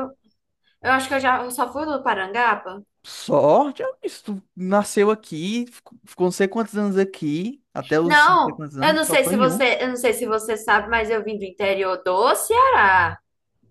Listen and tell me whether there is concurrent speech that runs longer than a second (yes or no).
yes